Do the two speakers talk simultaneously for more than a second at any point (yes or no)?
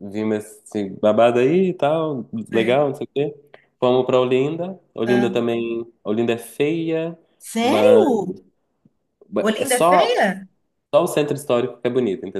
no